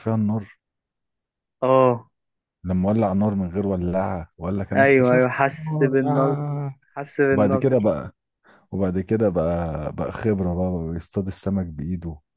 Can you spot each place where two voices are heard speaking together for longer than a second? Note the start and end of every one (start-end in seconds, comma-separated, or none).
4.8-6.4